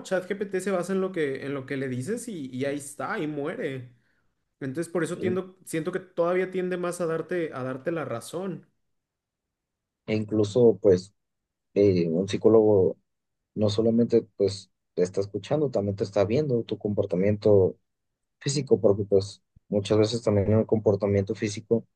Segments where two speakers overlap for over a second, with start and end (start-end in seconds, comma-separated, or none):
none